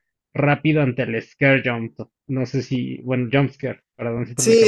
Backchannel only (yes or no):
no